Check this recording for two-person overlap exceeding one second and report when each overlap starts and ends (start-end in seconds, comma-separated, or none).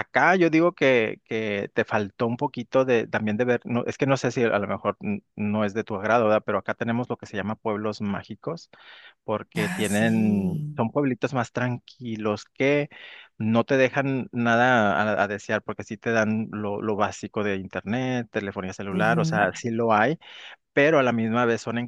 9.6-10.8